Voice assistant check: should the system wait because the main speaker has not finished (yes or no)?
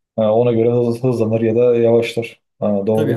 no